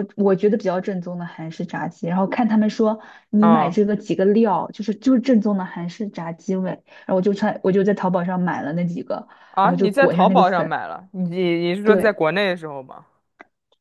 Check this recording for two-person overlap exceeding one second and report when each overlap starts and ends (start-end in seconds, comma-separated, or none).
9.5-10.8